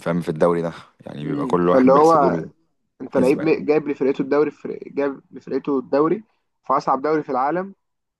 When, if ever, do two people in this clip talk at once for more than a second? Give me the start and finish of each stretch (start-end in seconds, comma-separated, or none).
1.2-2.4